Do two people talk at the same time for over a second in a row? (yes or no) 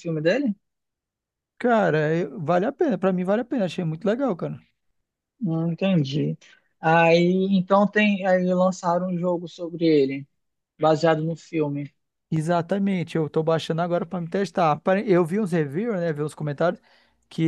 no